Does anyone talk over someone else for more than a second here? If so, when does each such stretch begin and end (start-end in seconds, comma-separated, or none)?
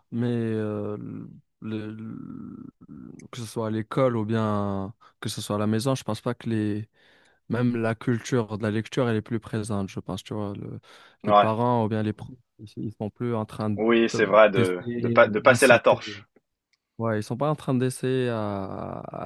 14.5-16.2